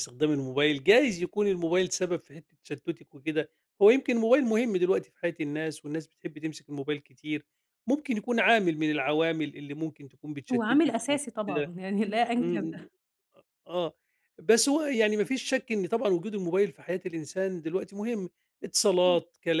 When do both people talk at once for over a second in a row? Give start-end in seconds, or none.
10.5-11.7